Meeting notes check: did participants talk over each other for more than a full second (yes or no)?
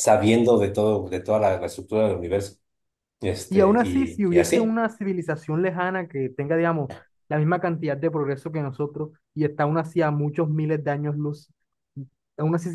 yes